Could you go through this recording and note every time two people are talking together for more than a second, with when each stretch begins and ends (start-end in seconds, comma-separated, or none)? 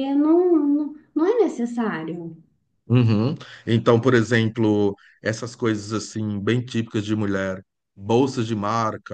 none